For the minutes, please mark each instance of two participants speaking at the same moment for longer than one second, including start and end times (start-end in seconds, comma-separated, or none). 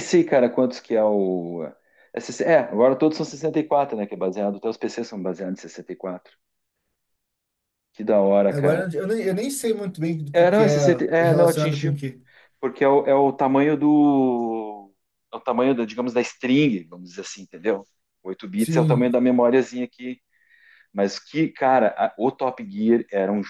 10.3-12.0